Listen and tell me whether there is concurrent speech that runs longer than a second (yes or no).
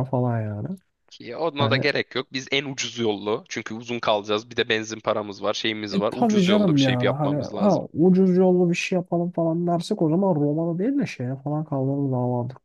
yes